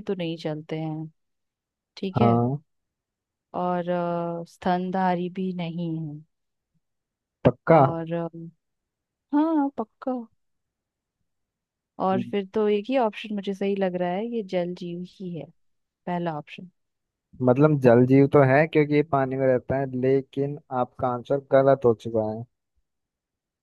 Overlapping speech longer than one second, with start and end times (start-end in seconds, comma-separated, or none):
none